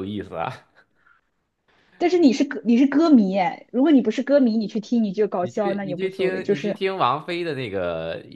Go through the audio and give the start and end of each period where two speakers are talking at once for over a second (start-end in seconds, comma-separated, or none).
5.4-6.8